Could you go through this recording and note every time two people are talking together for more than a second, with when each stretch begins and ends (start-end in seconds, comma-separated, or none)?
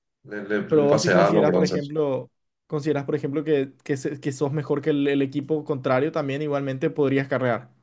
0.7-1.9